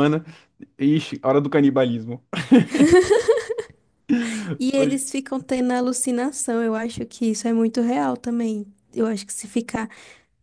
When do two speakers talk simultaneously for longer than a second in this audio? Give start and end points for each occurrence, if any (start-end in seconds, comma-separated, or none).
none